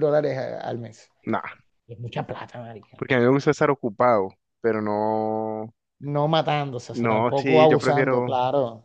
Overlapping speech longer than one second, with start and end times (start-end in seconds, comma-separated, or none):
6.9-8.3